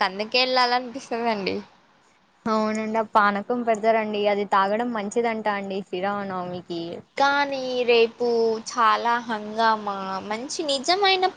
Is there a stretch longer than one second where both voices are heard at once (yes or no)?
no